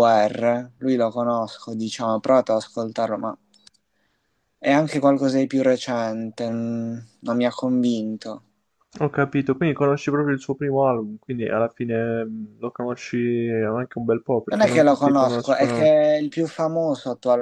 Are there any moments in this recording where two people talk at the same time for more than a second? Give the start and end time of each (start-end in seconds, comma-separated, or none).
14.5-15.9